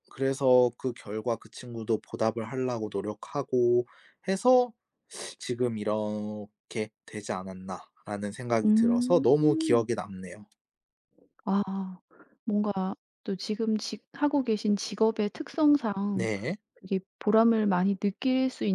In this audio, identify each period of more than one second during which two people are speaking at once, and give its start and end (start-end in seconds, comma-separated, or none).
8.6-9.9